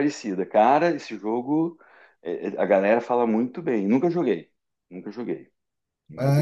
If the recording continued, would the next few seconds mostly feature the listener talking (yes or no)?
yes